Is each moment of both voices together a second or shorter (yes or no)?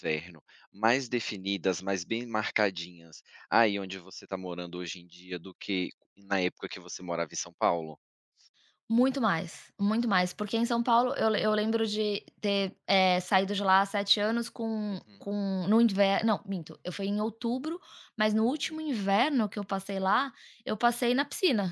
yes